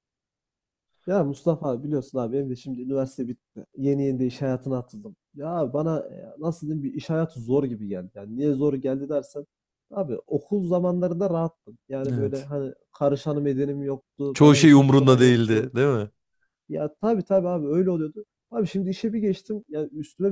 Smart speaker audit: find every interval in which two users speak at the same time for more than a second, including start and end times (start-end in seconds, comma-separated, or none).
14.3-15.7